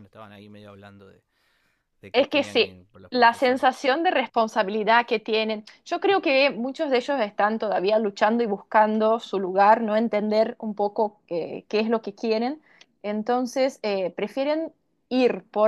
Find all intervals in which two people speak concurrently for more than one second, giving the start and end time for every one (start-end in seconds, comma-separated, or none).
2.1-3.7